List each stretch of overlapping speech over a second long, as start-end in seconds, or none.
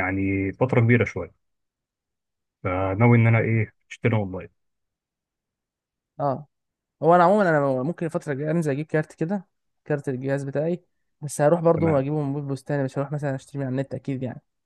none